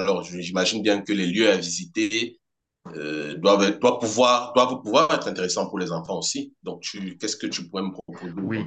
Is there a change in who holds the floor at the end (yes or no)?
yes